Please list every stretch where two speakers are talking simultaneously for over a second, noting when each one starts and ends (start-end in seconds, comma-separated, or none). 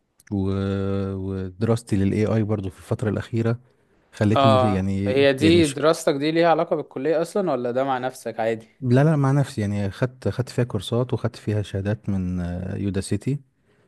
4.4-5.8